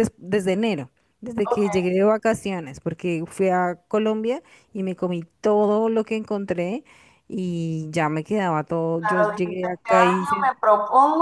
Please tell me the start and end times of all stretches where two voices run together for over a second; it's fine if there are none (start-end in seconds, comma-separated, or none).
9.0-10.5